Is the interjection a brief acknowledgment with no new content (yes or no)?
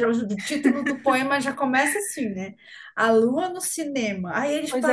yes